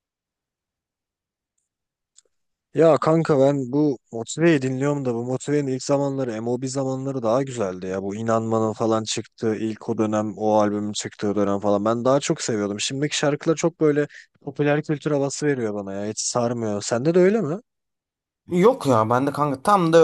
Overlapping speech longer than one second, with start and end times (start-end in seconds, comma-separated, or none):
none